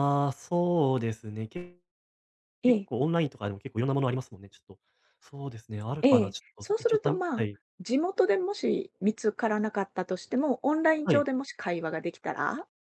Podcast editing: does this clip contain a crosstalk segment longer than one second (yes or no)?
yes